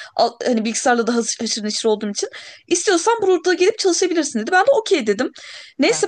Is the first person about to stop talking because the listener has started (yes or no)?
no